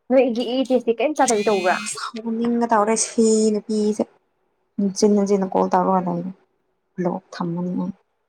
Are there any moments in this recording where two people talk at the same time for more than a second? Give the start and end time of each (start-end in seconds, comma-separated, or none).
none